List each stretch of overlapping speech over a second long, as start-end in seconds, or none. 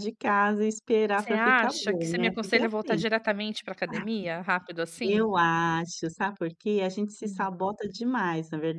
1.1-3.0